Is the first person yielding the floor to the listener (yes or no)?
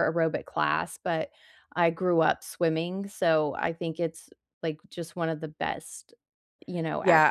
yes